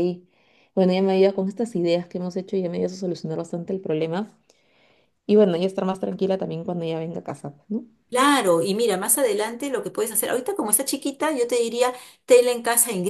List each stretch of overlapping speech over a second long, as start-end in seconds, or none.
none